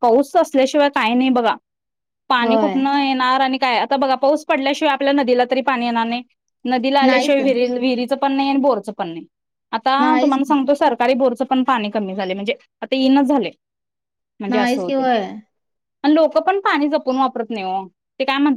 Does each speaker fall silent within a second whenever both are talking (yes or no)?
yes